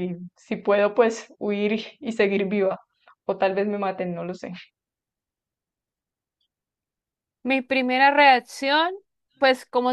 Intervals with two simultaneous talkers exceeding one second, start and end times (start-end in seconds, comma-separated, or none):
none